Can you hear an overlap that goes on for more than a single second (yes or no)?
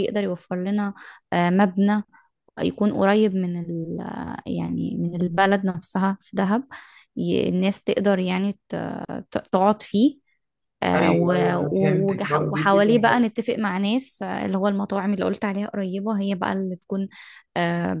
yes